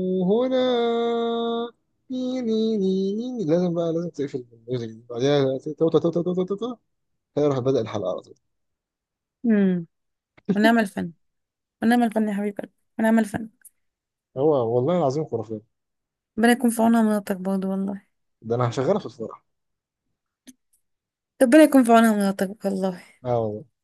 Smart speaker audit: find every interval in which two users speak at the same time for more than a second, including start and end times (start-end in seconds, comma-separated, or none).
none